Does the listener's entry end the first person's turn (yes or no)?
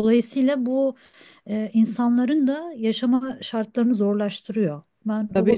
yes